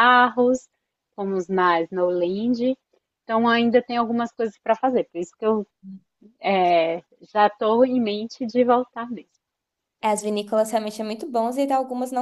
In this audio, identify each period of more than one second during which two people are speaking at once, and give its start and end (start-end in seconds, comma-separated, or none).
none